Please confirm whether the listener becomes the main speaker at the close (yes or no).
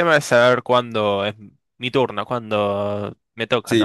yes